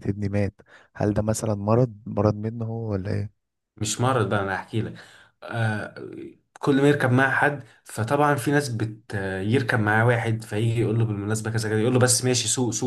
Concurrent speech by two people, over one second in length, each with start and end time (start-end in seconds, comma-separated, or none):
none